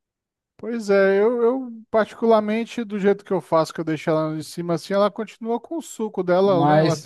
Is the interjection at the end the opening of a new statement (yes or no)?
yes